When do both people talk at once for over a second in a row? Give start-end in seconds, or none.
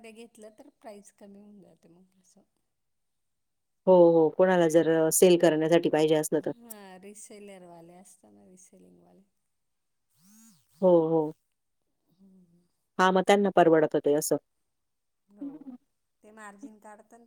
none